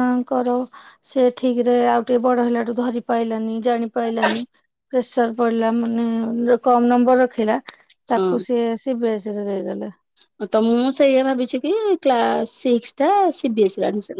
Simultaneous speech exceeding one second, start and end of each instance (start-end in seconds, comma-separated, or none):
none